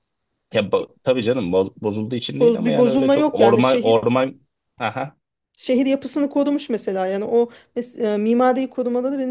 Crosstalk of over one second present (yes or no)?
yes